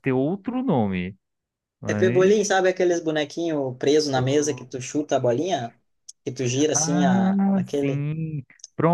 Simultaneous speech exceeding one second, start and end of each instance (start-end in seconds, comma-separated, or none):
6.7-8.1